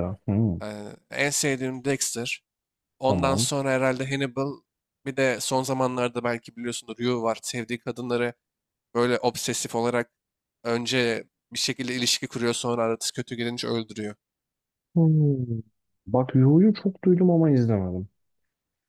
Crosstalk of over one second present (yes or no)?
no